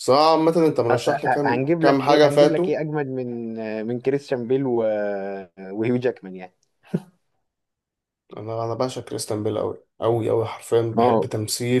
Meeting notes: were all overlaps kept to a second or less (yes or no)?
no